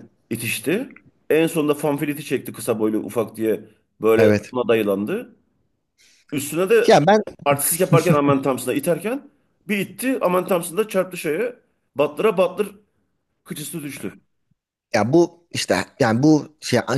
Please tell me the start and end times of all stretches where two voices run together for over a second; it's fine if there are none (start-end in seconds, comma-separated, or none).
none